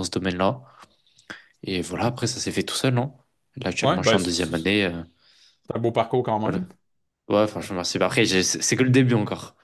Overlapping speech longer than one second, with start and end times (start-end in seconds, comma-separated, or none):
3.8-5.0